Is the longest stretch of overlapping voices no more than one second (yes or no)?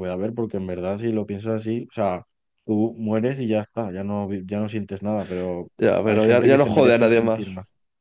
no